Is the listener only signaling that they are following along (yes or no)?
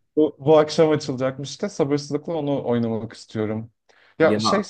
yes